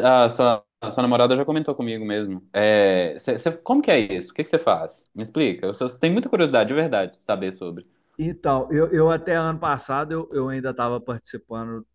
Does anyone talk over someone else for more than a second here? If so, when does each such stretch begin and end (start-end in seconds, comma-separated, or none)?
none